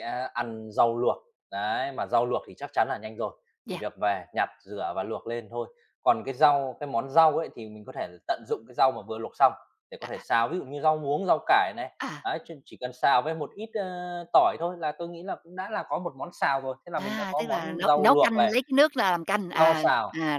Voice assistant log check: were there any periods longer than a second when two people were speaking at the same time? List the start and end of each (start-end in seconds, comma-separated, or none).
16.9-18.6